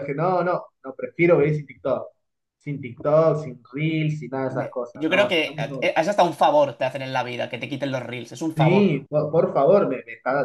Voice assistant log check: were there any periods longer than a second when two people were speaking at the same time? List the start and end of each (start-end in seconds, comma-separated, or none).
4.4-5.9